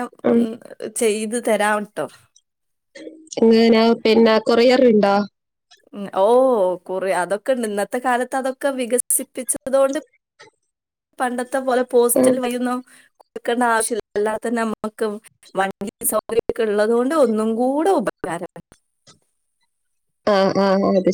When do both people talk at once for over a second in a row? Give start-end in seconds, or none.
none